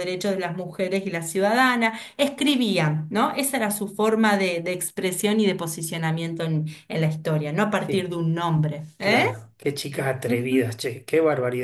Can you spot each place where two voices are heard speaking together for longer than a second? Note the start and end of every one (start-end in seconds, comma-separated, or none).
none